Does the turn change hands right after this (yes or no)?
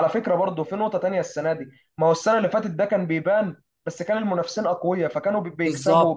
no